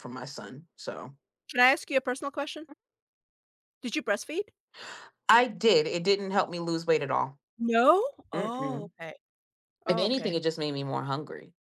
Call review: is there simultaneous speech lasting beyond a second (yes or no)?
no